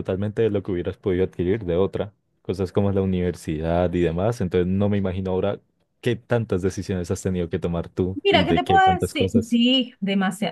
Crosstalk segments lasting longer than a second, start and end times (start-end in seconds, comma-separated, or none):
8.2-9.6